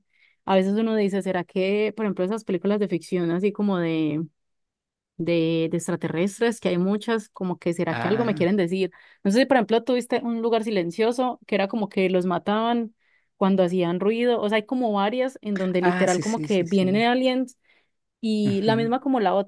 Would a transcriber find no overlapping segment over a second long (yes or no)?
no